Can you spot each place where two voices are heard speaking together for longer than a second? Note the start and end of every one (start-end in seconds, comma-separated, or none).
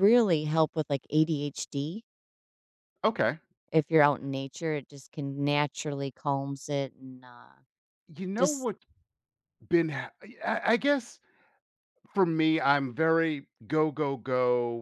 none